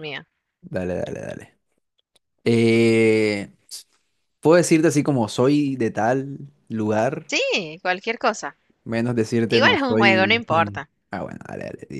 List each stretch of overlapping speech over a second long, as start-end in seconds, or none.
9.5-10.9